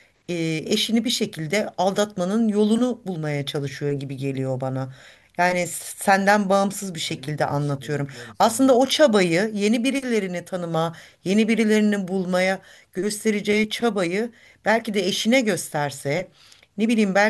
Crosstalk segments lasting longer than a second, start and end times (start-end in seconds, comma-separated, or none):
6.6-8.7